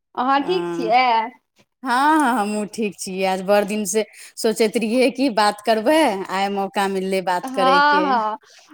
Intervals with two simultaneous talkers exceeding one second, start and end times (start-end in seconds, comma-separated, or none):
none